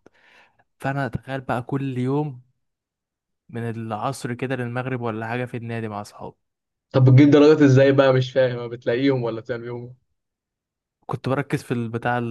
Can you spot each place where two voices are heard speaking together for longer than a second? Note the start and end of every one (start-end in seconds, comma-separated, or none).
none